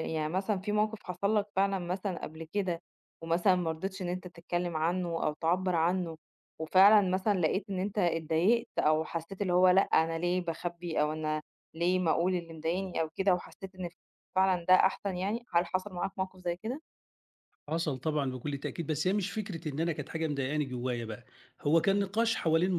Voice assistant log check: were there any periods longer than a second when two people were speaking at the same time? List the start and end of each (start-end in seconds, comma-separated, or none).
none